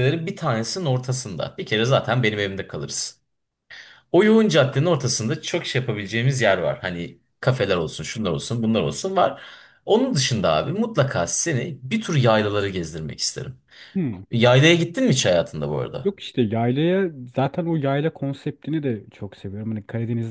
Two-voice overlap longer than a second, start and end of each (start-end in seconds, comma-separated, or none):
none